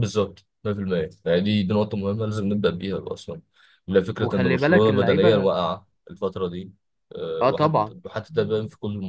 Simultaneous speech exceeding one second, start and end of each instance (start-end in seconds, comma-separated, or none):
4.2-5.5